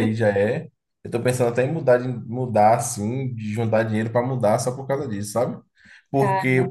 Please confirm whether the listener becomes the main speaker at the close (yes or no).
no